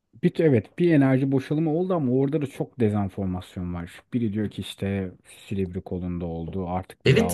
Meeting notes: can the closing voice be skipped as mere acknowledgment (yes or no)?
no